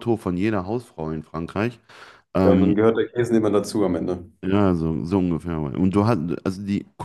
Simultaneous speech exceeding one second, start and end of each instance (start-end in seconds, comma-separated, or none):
none